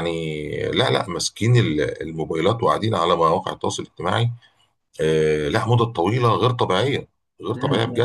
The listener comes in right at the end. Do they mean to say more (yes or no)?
yes